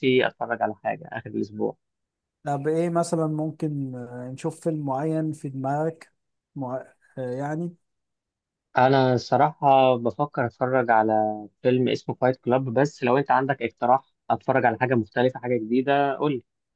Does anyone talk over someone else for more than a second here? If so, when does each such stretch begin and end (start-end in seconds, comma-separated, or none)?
none